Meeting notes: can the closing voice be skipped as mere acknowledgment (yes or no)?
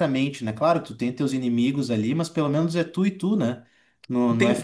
no